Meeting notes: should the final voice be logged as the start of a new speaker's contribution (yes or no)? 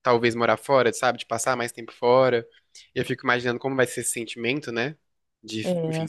no